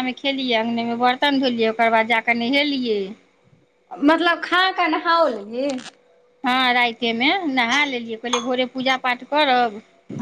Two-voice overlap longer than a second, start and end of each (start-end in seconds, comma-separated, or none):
none